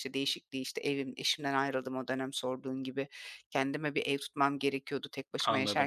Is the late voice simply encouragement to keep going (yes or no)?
yes